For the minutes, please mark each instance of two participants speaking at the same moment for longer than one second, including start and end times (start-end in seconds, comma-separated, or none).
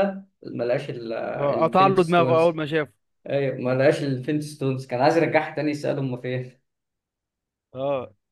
1.4-2.6